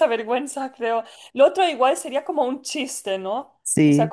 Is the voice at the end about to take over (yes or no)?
no